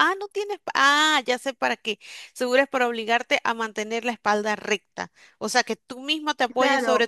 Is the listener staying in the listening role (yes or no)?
no